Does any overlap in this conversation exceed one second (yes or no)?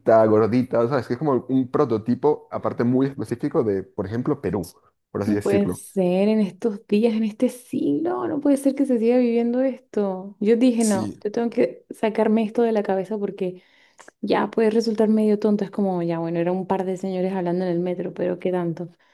no